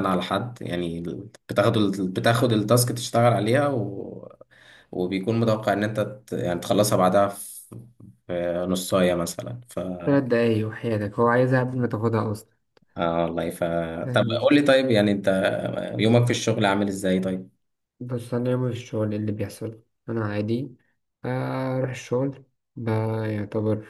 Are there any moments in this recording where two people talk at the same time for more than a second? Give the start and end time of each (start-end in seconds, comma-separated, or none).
none